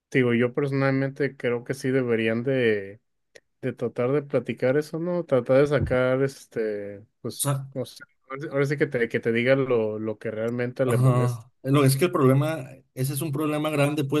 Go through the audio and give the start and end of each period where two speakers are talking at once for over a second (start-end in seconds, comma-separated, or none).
none